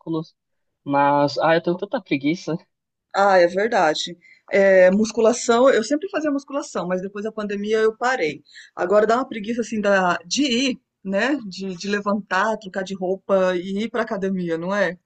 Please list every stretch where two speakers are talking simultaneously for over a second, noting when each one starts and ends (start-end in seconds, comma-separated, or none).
none